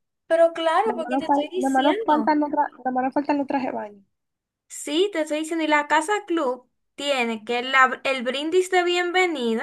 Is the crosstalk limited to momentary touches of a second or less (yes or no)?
no